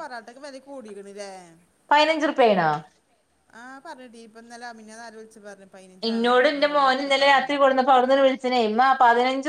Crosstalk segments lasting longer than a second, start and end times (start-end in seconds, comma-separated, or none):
none